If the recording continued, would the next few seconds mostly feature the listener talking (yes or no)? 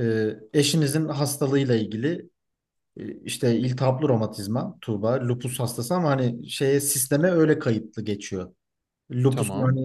no